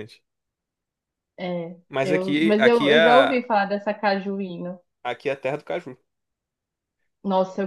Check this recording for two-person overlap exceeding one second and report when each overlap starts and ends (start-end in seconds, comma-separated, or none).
1.9-3.4